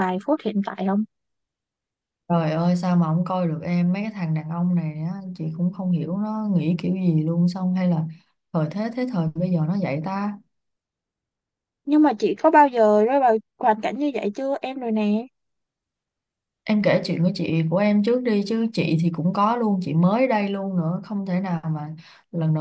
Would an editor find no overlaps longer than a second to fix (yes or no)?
yes